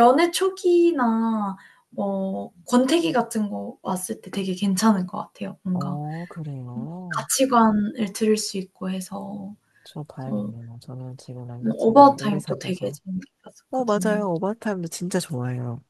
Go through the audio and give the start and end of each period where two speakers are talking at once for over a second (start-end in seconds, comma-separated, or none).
11.6-13.0